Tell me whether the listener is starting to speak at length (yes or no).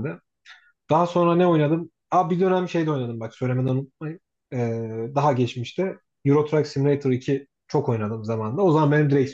no